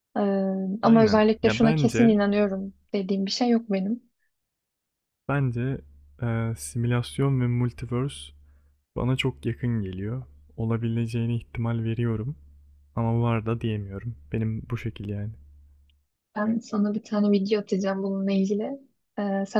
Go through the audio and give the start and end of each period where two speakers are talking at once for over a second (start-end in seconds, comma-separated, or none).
0.8-2.2